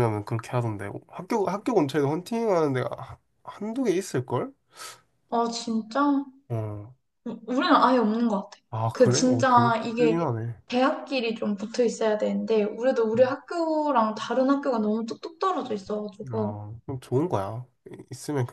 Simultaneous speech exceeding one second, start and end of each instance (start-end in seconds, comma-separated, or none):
8.7-10.2